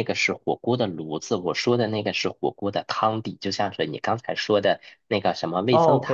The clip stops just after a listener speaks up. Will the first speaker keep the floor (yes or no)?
yes